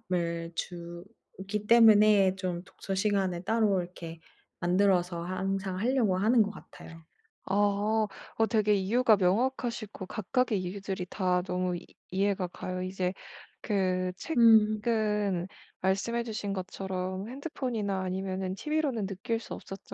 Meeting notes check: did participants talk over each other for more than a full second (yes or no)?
no